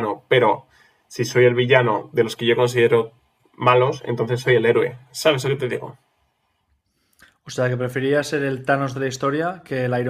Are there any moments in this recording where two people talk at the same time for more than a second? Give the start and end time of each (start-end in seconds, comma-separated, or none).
none